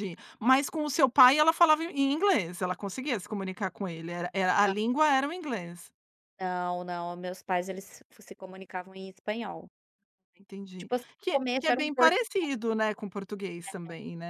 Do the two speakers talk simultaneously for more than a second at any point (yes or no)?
yes